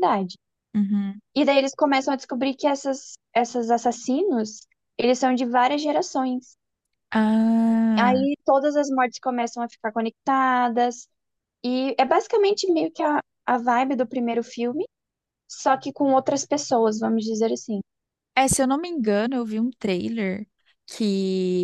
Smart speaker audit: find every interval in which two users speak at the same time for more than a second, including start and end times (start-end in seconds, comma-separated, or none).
none